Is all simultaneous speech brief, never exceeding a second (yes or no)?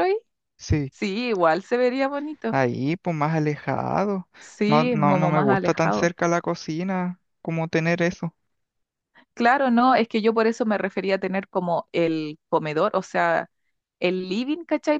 no